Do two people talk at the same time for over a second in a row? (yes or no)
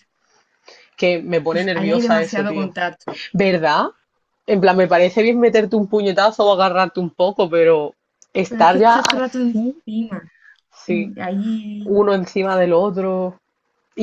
yes